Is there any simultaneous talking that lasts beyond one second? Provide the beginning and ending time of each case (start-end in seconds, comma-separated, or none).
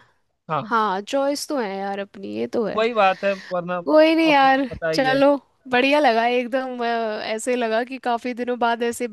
3.9-5.2